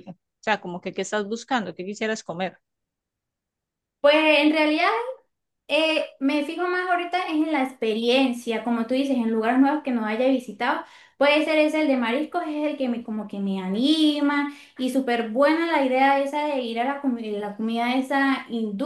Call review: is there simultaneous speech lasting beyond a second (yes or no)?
no